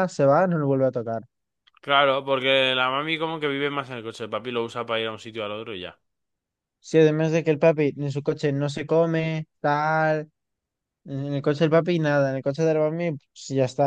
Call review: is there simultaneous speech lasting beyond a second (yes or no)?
no